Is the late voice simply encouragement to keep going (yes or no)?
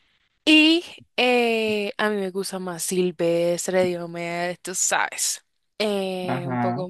yes